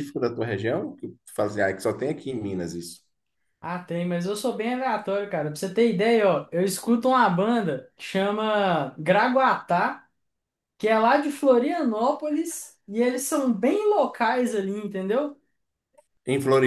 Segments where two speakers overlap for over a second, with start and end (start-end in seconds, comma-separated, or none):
none